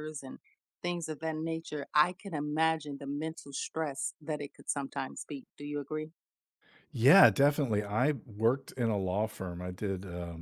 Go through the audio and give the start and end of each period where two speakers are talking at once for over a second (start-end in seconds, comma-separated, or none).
none